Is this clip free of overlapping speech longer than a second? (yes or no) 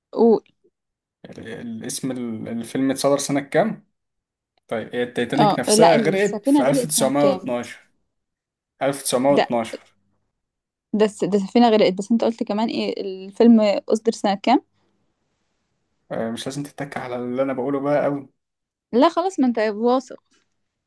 no